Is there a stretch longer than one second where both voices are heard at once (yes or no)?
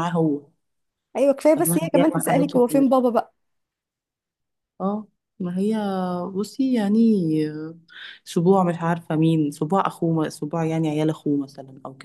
yes